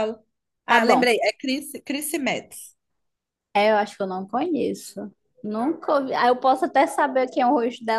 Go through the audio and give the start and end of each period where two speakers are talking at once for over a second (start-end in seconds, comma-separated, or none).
none